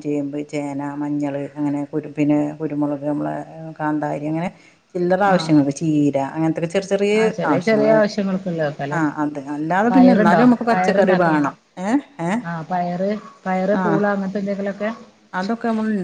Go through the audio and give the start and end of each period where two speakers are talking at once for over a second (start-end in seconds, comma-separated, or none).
9.9-11.5